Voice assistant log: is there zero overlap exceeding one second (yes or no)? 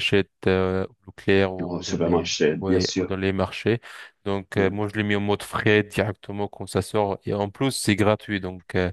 no